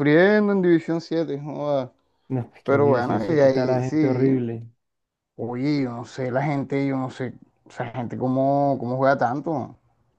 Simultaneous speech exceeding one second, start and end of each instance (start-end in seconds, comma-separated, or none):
2.6-4.4